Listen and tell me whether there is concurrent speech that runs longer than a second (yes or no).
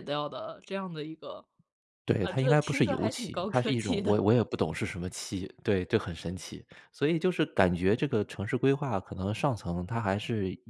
yes